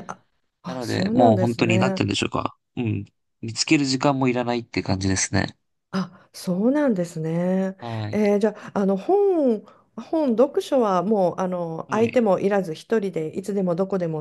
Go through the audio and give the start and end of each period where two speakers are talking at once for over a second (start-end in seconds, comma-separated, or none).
0.7-2.0